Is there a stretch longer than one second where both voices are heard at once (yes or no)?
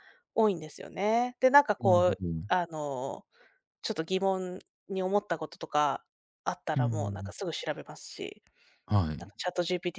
no